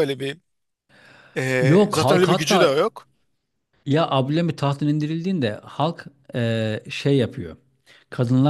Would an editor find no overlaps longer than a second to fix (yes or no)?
no